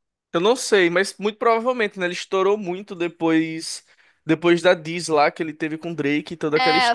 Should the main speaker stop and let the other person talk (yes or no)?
yes